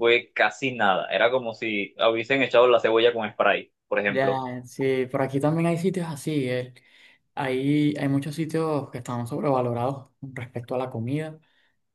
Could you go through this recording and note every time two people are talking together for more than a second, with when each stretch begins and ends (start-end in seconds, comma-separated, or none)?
none